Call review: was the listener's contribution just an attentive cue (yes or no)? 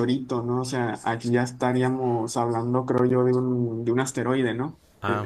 yes